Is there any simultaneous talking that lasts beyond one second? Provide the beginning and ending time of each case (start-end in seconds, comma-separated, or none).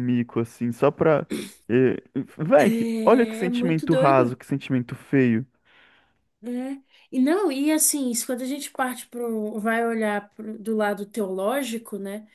2.6-4.4